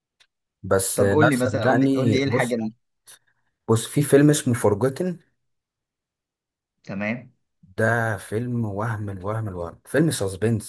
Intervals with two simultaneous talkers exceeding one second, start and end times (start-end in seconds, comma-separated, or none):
1.0-2.6